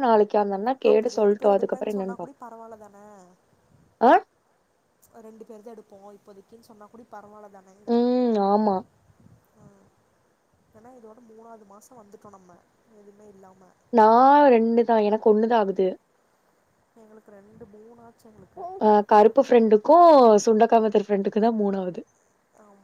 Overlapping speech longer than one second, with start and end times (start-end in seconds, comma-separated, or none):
0.9-2.4